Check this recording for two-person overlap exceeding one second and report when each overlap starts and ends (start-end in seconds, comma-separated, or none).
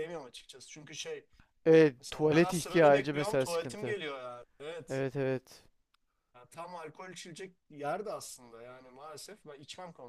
2.0-4.0